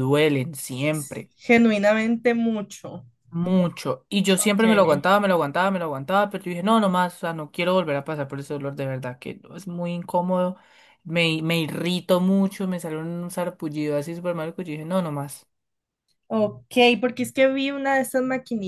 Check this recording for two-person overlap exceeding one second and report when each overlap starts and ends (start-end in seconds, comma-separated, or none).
none